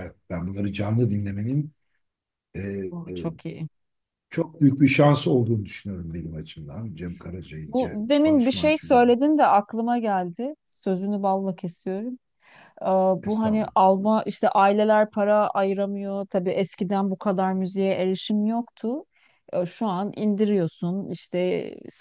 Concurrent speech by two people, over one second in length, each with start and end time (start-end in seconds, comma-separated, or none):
7.7-9.0